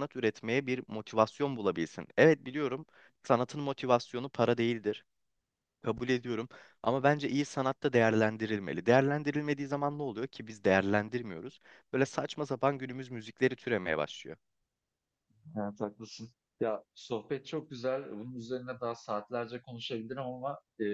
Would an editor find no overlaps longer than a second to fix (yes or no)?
yes